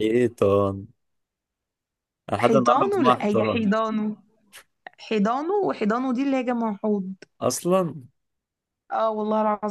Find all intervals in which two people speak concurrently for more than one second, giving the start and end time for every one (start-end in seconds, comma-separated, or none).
2.4-3.7